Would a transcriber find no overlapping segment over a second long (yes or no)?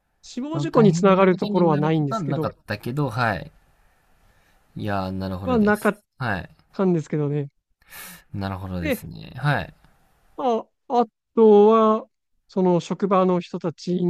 no